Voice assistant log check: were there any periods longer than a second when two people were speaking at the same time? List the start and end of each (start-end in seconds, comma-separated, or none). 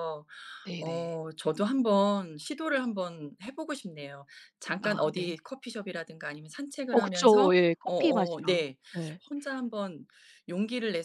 6.9-8.8